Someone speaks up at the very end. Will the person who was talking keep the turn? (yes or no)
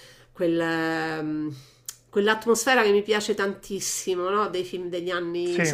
yes